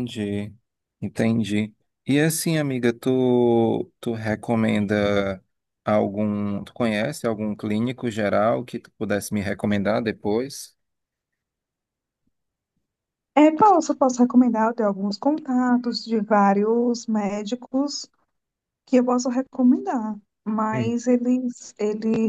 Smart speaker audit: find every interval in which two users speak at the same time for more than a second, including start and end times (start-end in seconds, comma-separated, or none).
none